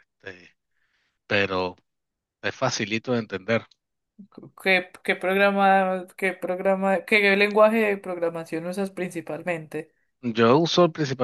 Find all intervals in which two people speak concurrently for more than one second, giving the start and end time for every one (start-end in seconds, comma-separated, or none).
none